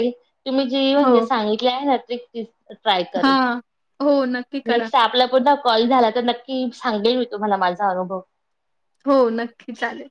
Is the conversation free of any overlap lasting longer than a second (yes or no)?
yes